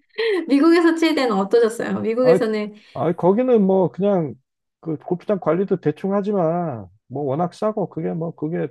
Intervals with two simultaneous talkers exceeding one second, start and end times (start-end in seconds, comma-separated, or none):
none